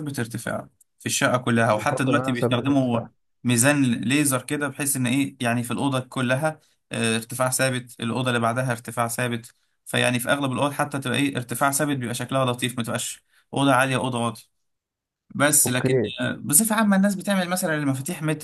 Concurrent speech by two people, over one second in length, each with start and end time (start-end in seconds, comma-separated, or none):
1.7-3.0